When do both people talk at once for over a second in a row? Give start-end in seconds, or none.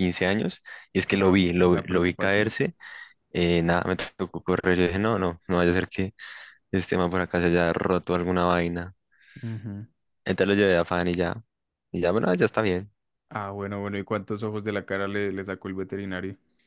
1.0-2.5